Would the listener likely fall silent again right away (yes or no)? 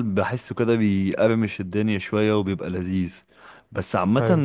yes